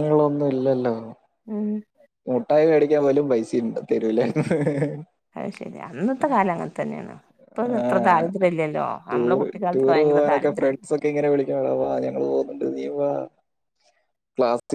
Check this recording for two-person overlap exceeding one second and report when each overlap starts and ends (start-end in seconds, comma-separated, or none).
9.1-10.9